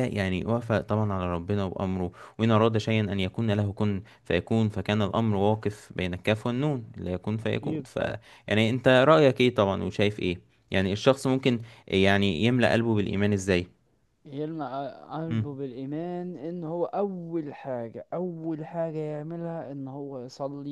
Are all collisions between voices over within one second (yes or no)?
yes